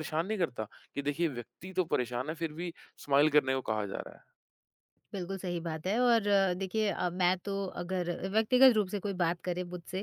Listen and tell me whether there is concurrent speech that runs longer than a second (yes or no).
no